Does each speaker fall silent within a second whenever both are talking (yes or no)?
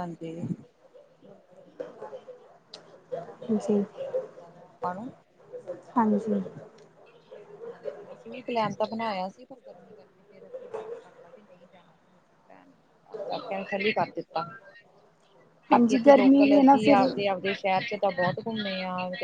no